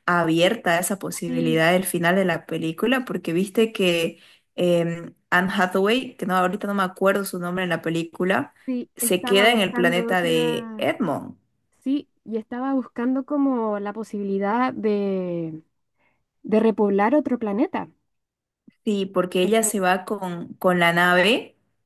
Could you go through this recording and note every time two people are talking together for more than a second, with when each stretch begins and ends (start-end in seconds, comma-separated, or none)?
9.0-10.9